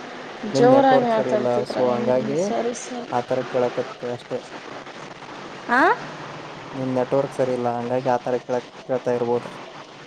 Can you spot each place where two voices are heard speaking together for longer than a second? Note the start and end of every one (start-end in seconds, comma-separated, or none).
0.6-2.4